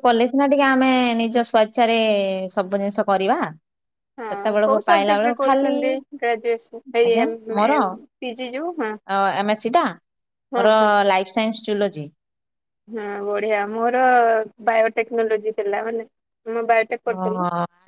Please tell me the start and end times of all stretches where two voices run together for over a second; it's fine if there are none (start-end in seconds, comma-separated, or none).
4.3-7.8